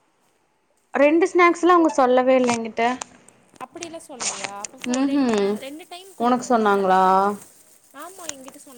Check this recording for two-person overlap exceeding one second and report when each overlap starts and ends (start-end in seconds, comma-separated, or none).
none